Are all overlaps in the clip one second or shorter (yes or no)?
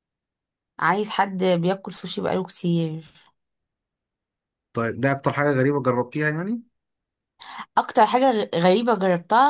yes